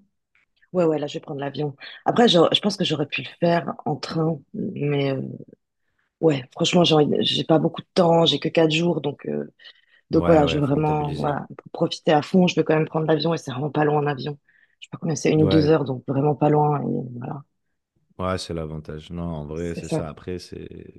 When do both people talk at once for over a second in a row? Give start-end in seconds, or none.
10.1-11.3